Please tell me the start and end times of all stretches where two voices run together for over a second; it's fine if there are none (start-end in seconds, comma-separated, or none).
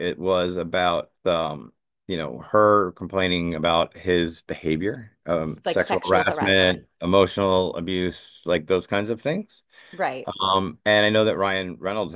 5.4-6.8